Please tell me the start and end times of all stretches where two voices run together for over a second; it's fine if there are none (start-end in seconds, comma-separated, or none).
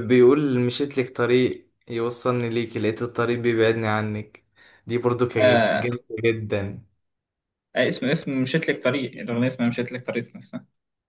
none